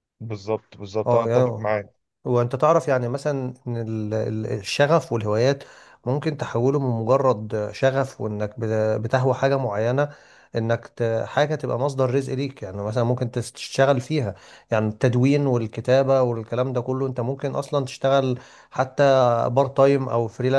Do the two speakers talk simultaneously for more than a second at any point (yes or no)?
no